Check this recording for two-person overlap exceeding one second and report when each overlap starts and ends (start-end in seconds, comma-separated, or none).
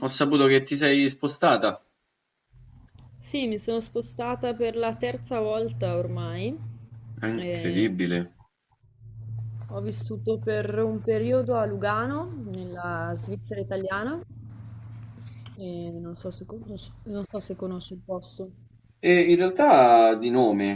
none